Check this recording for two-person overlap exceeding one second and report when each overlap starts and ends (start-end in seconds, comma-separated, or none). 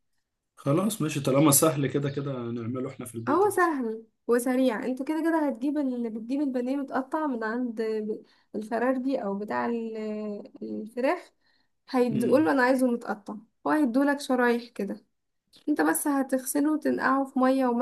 none